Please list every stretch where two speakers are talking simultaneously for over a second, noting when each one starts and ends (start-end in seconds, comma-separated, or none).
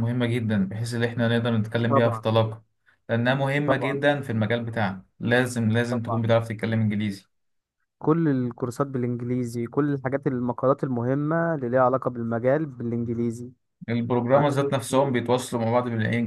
none